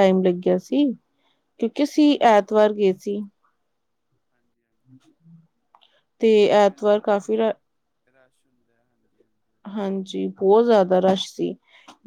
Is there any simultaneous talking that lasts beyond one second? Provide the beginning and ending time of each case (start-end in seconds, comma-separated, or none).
none